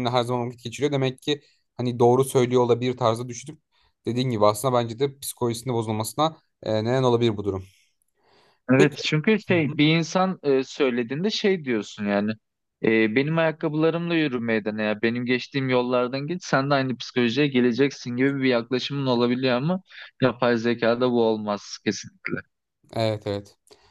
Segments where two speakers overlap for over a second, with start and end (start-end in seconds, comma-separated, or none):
none